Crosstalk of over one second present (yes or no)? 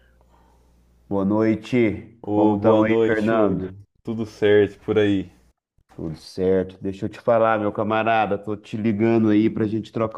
yes